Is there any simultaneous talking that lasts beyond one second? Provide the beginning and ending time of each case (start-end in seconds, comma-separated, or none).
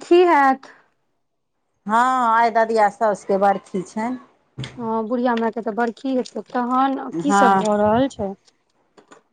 none